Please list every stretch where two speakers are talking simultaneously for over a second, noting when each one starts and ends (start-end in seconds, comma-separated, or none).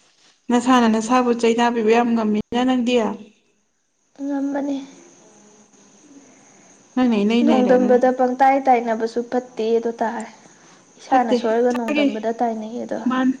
11.1-12.4